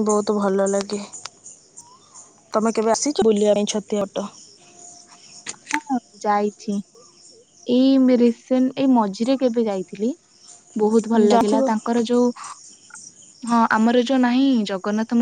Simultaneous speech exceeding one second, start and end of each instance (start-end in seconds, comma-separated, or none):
none